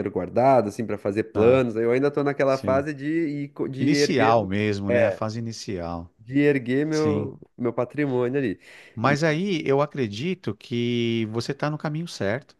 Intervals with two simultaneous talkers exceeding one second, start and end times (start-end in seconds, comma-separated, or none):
3.8-5.2